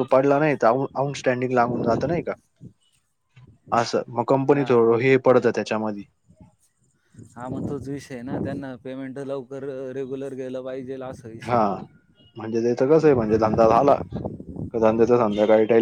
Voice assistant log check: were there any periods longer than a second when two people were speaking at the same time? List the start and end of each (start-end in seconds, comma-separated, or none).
none